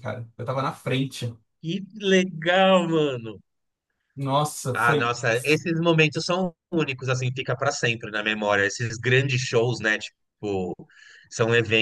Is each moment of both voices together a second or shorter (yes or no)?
yes